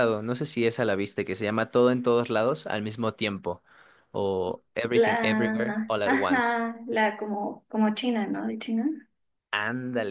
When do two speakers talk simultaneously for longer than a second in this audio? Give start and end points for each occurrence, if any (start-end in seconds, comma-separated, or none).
4.9-6.6